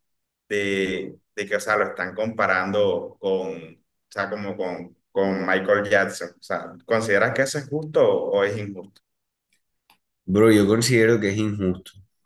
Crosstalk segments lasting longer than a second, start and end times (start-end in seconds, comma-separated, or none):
none